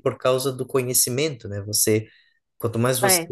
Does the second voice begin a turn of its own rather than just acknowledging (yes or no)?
no